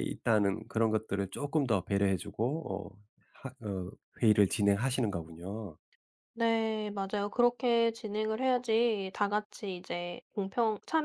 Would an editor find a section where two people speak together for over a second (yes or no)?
no